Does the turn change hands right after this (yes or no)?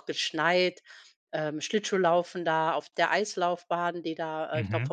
no